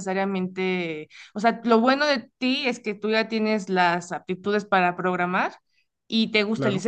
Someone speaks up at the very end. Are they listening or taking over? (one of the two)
listening